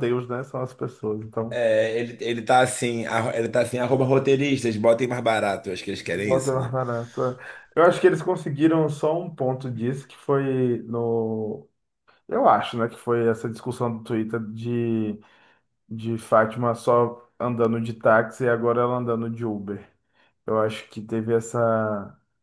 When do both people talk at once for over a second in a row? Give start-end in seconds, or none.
none